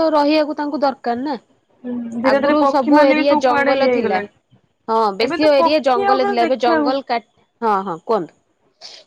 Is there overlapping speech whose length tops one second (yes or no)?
yes